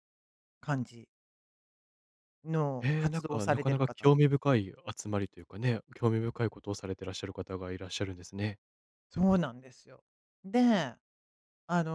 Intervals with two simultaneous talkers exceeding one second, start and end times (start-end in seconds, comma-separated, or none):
2.8-4.2